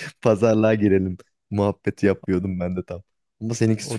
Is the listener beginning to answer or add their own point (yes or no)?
yes